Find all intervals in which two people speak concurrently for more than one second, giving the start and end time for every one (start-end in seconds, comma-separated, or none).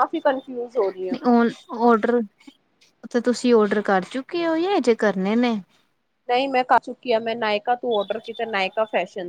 none